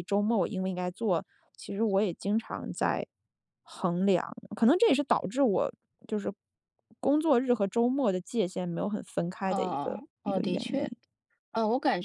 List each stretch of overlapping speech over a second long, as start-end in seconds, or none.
9.5-10.9